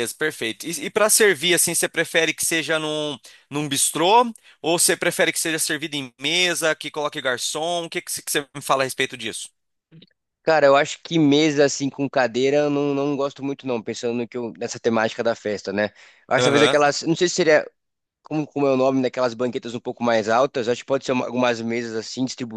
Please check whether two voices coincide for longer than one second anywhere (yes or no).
no